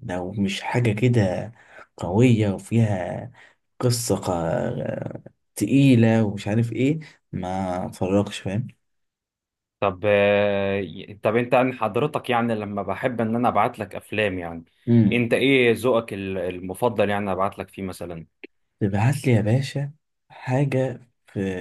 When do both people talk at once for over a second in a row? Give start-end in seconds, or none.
none